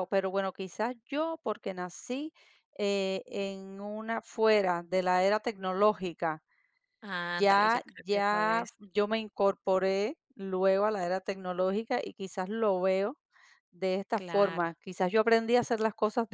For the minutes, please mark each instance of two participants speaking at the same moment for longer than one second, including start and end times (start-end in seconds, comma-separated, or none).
7.2-8.7